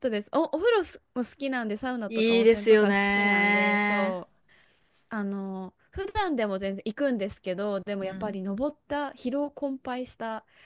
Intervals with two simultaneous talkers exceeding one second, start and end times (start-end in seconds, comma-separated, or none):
2.1-4.2